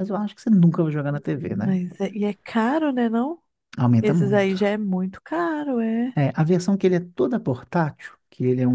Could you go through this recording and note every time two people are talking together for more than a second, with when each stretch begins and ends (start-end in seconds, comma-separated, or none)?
none